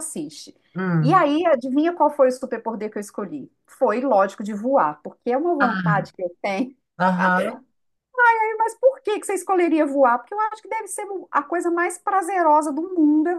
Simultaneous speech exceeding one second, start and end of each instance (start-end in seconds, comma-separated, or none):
none